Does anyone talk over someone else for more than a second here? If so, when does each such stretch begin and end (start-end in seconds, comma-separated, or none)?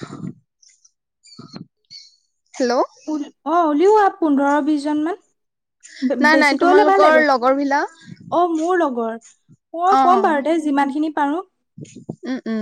6.2-7.9